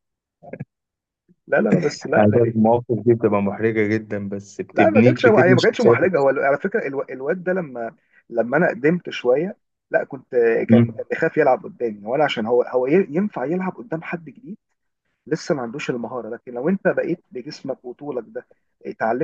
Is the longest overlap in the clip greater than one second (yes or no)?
yes